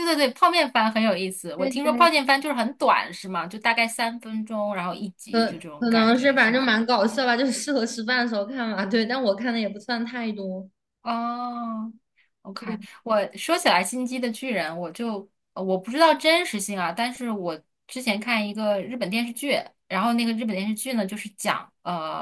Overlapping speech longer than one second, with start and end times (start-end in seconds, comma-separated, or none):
5.3-6.7